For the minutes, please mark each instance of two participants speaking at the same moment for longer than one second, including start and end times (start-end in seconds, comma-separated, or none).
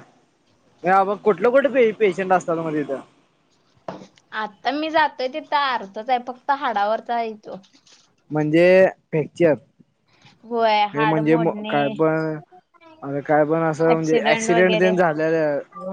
10.5-11.9